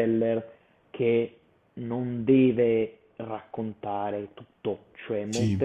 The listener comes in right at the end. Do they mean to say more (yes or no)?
no